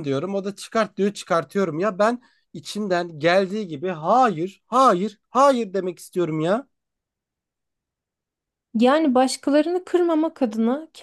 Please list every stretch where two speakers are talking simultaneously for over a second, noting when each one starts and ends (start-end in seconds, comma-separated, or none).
none